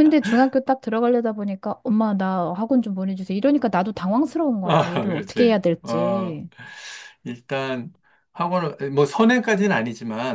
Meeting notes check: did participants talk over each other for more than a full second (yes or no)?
yes